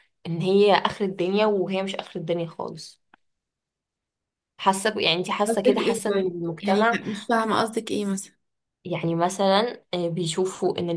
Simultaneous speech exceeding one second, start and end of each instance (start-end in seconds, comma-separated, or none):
5.5-7.0